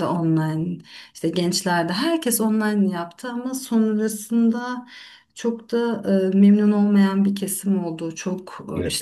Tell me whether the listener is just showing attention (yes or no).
yes